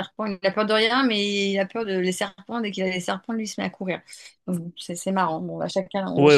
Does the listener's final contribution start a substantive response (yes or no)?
yes